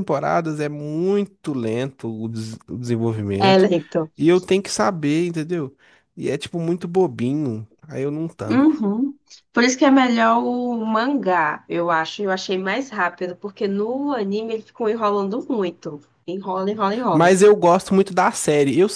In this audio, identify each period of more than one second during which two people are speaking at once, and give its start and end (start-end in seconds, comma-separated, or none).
none